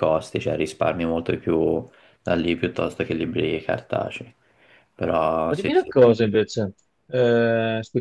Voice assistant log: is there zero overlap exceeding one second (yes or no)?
yes